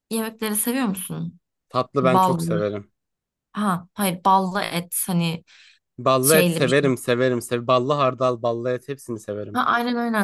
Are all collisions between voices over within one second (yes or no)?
yes